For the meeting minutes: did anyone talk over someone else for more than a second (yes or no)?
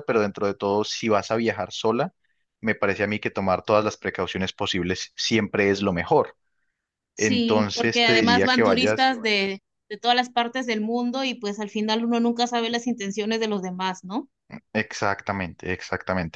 yes